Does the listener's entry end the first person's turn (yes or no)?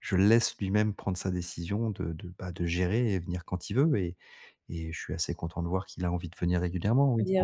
yes